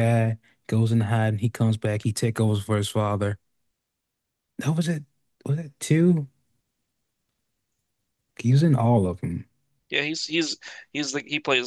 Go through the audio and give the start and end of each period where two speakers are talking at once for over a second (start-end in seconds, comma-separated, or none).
none